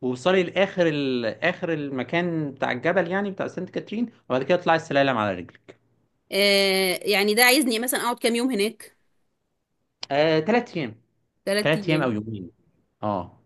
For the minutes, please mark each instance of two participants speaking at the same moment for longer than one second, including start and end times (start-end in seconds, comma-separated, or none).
none